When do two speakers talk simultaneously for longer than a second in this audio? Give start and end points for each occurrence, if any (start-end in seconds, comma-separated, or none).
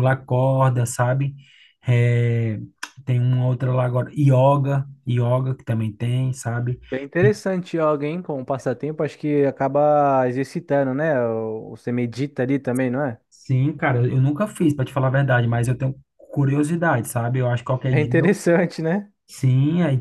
none